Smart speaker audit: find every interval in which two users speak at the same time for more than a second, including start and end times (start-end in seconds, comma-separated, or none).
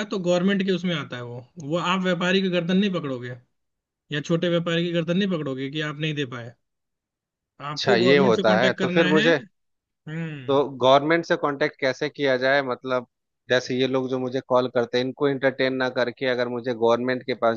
7.7-9.3